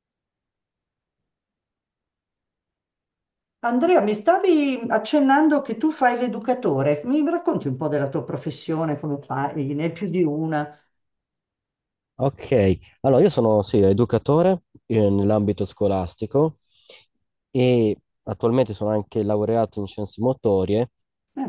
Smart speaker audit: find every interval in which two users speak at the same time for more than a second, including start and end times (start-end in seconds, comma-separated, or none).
none